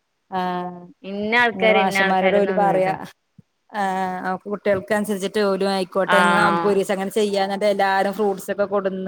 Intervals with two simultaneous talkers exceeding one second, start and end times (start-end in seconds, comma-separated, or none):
1.6-2.9